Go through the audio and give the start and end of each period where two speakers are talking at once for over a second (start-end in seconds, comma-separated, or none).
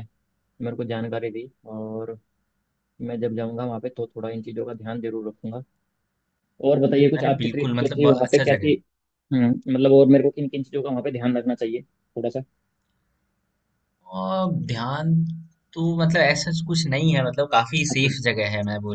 7.2-8.7